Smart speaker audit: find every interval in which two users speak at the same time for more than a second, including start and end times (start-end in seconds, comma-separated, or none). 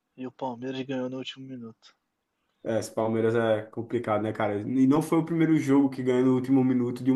none